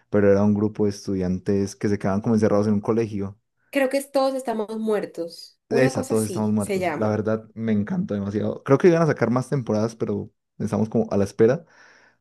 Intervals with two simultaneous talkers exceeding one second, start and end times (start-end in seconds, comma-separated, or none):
5.7-7.2